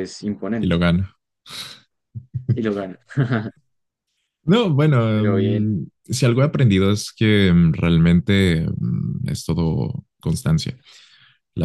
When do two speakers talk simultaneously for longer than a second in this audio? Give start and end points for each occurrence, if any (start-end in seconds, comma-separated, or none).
none